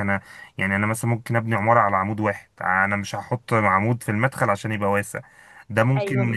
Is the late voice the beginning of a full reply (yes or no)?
yes